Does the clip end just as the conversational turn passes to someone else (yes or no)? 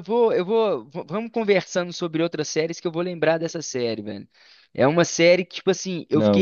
no